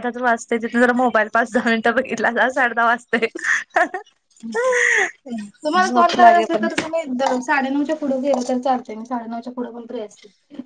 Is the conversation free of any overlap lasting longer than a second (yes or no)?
yes